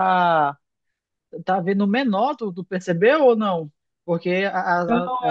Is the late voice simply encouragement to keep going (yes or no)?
no